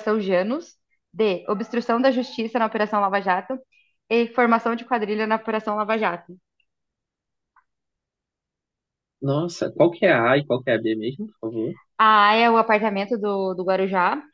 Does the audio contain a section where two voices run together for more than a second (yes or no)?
no